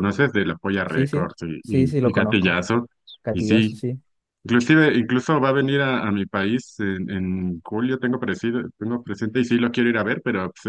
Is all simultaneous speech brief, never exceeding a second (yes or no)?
no